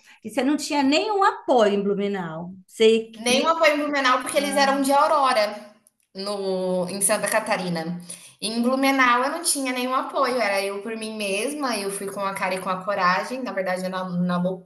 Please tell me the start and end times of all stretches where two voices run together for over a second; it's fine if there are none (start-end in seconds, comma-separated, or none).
none